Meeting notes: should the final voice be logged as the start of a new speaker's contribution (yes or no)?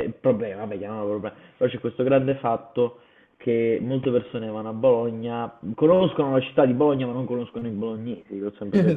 yes